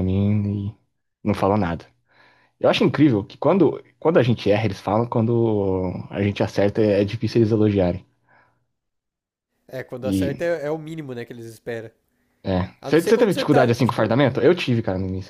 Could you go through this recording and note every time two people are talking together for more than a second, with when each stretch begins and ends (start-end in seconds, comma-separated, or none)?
12.8-14.2